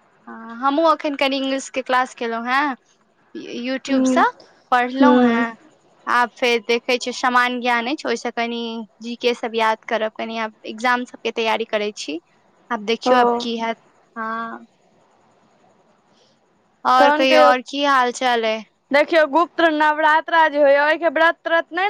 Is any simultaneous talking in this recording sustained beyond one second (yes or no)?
no